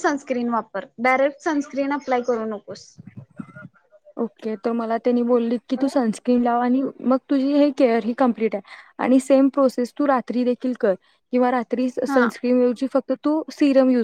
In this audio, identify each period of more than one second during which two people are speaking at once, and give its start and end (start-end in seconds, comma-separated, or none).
none